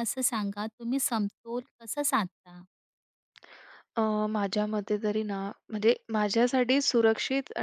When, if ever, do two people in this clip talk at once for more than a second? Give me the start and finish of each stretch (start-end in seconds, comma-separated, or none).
none